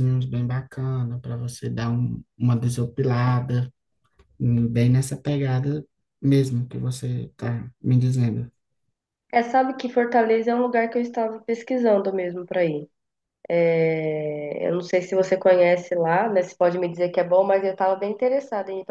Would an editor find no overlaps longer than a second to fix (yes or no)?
yes